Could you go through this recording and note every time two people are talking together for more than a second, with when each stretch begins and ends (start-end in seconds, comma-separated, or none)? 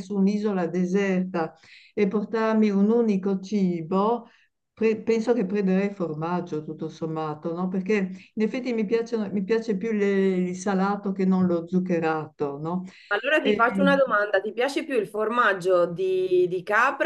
none